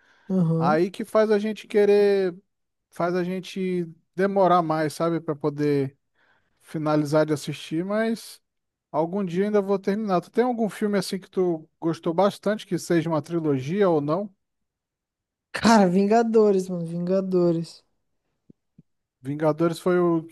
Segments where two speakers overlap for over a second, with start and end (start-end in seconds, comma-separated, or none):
none